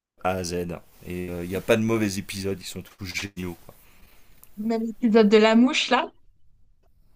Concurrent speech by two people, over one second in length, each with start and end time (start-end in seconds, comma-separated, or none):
none